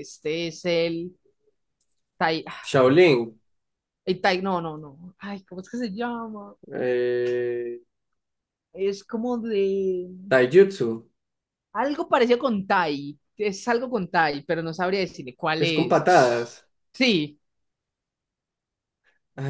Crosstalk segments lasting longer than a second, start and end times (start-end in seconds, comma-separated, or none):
none